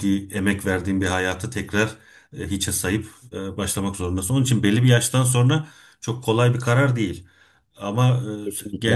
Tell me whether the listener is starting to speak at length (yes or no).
no